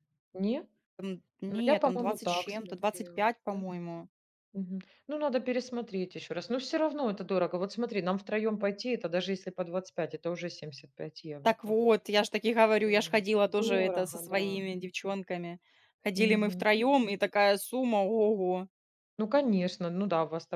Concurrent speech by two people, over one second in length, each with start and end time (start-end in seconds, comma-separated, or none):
1.5-3.6, 12.9-14.6